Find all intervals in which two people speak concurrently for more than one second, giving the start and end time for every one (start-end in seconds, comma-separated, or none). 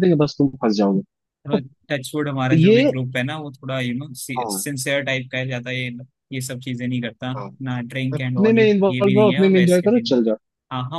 8.1-10.2